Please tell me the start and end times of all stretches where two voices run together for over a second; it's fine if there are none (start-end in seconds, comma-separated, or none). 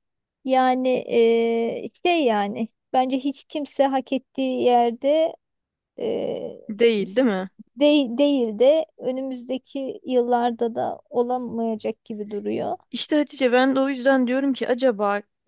none